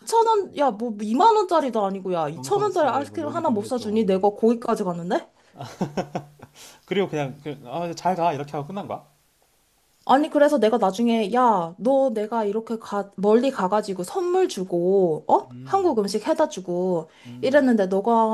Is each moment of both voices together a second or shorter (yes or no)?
no